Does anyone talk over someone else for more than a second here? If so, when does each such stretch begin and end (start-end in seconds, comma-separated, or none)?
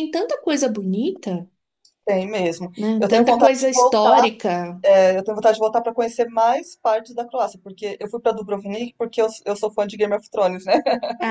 2.8-4.3